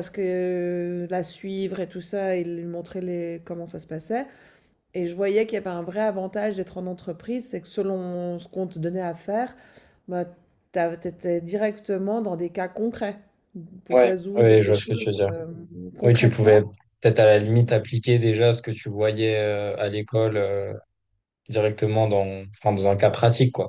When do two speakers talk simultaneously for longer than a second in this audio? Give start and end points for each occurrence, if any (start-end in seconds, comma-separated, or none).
13.9-15.3